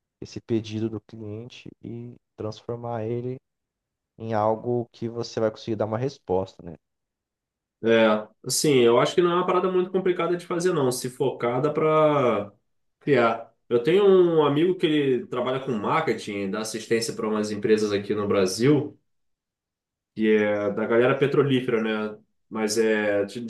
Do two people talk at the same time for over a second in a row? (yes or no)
no